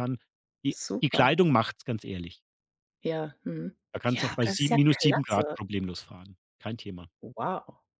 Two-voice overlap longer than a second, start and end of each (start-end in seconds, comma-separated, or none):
3.9-5.6